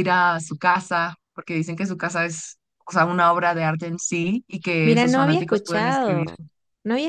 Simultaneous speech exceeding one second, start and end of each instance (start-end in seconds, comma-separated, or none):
4.8-6.3